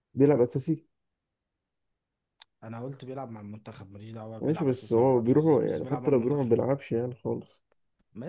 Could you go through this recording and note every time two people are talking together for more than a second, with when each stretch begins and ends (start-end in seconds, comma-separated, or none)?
4.4-6.5